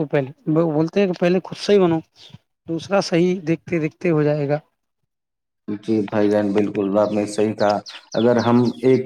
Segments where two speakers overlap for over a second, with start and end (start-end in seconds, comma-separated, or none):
none